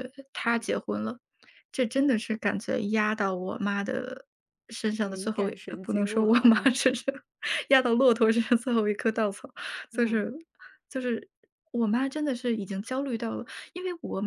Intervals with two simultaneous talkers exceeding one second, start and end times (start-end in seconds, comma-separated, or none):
5.0-6.7